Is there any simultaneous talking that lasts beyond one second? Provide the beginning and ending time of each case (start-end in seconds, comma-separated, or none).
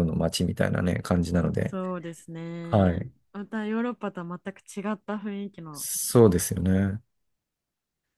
none